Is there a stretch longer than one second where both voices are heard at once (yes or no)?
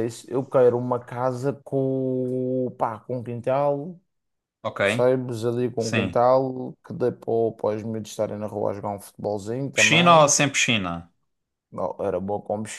no